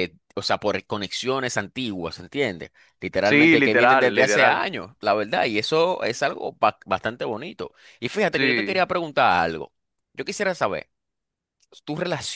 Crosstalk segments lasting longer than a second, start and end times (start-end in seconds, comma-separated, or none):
3.2-4.7